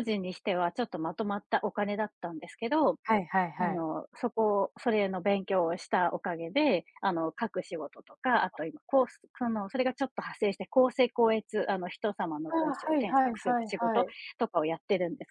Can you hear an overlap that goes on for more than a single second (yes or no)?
yes